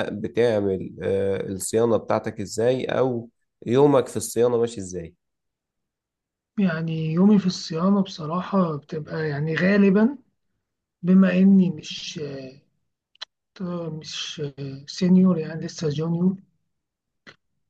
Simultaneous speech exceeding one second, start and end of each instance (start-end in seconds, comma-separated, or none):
none